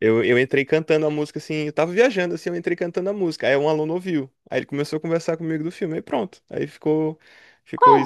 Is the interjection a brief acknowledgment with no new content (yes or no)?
no